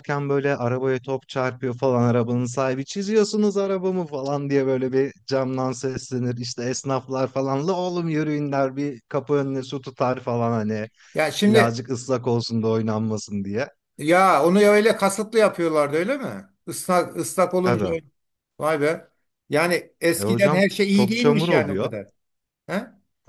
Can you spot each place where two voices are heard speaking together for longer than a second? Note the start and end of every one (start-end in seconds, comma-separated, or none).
20.2-21.9